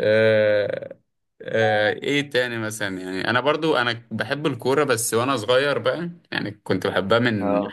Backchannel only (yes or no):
yes